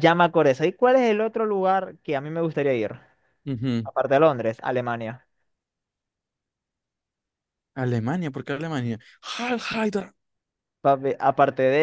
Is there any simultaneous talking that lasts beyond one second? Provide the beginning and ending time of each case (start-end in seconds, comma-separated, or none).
none